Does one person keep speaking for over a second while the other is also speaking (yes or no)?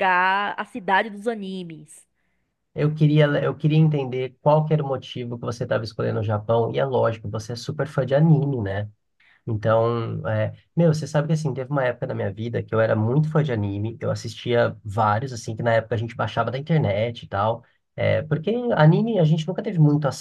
no